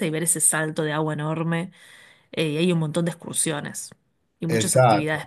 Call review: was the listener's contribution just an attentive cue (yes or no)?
no